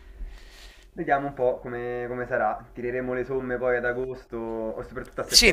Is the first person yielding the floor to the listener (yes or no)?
yes